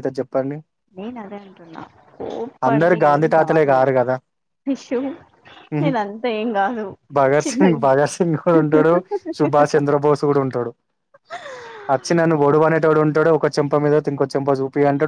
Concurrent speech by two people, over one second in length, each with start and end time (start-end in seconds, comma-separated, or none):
none